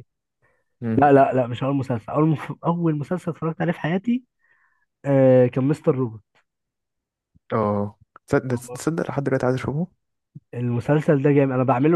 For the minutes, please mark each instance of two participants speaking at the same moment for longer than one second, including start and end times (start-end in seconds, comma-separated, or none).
none